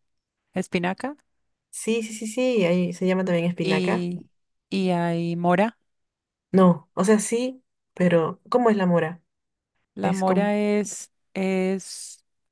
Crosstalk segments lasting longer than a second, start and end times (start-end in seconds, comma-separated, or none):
none